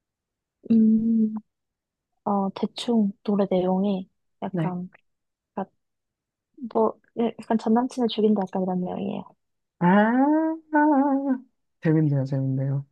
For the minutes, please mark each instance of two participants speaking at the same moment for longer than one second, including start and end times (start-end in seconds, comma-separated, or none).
none